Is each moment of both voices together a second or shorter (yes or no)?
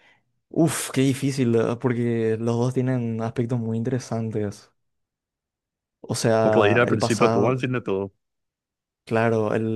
no